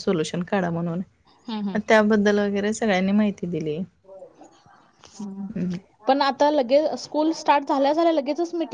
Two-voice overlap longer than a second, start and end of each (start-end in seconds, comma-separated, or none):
none